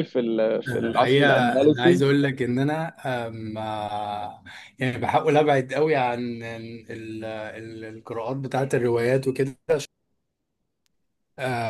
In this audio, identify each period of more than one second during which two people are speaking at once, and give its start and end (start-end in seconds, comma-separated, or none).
0.7-2.1